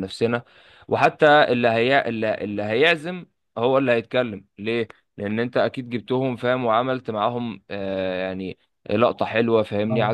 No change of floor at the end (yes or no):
yes